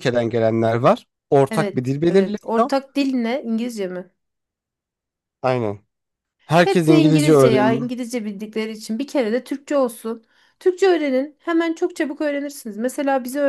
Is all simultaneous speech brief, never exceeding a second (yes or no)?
no